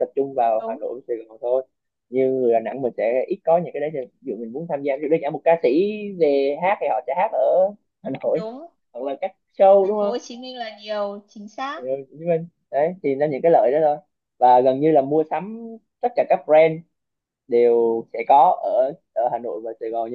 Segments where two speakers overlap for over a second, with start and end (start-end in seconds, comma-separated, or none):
none